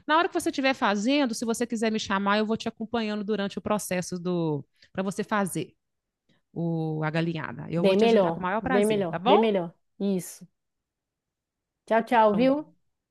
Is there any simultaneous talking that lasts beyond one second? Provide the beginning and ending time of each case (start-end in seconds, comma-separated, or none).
7.7-9.5